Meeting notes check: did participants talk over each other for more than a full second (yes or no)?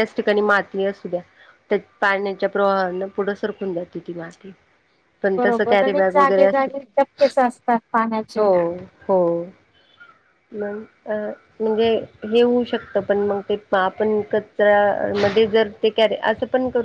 yes